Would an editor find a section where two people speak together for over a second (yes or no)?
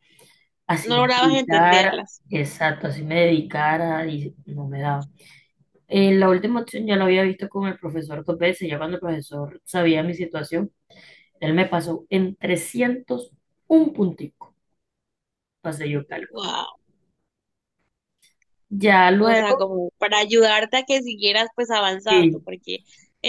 yes